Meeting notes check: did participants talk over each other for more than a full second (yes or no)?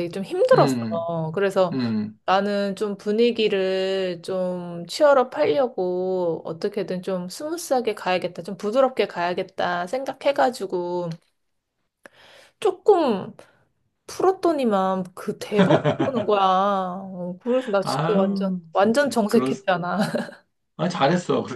yes